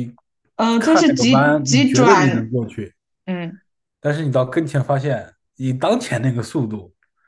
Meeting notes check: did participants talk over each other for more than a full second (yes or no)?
yes